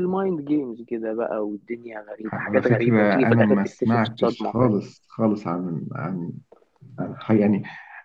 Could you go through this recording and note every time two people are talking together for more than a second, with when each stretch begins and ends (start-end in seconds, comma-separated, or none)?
2.3-4.7